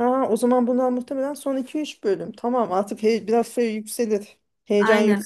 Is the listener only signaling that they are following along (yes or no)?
yes